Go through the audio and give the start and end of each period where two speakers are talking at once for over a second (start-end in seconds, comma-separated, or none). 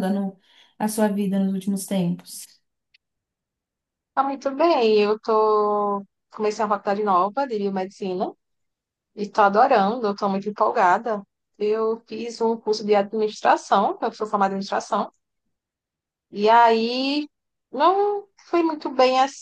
none